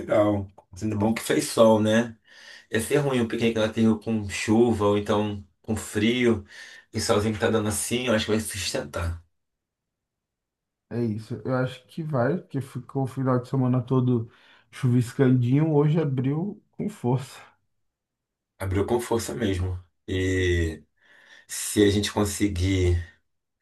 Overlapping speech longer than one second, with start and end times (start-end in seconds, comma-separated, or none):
none